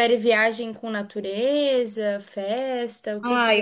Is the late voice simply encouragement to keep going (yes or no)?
no